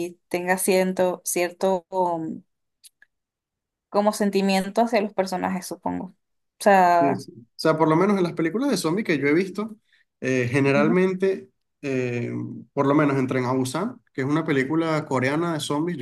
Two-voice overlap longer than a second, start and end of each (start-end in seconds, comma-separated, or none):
none